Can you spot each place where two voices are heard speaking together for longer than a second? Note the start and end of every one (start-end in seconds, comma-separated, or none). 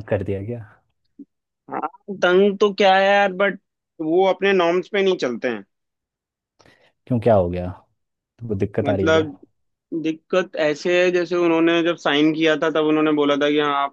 none